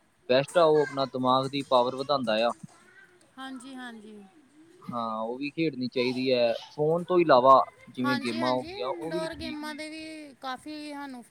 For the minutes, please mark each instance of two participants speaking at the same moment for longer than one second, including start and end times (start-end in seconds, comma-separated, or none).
8.0-9.8